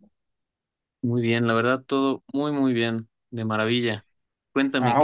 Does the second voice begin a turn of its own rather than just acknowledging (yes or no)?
yes